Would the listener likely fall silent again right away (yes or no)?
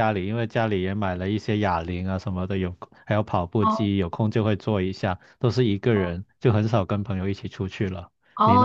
no